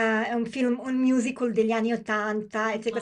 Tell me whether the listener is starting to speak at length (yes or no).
no